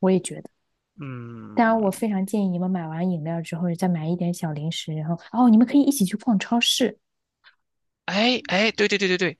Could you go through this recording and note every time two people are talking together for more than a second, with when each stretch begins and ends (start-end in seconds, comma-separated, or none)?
none